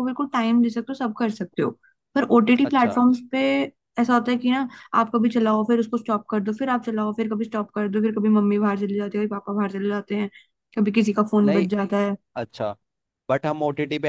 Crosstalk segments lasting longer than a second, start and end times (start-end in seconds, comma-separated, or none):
none